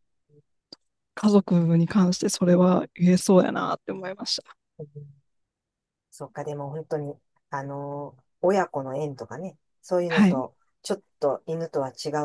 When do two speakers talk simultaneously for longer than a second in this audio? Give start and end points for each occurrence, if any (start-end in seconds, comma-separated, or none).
none